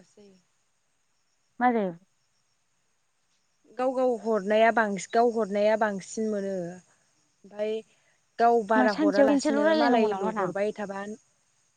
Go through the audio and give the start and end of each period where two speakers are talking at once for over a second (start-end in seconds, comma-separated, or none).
8.8-10.5